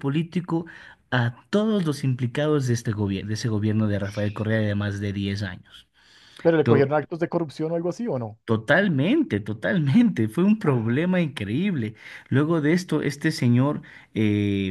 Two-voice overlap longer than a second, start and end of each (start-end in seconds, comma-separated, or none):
none